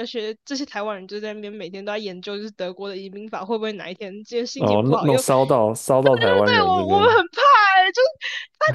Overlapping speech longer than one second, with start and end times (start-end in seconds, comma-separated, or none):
4.5-7.1